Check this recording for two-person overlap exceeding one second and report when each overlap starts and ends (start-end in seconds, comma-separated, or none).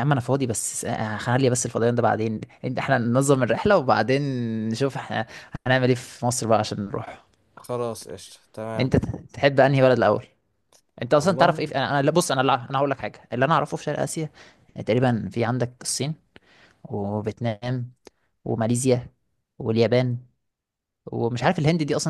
none